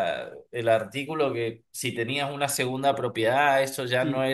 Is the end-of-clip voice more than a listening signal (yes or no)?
yes